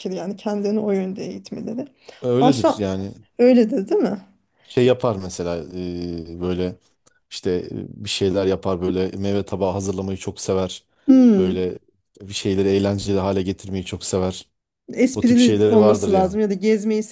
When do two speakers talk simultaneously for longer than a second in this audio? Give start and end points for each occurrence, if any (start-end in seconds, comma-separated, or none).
15.1-16.4